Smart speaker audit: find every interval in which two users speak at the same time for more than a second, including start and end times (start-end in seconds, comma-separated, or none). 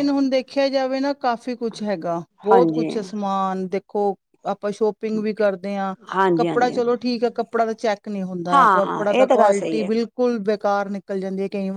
8.5-9.9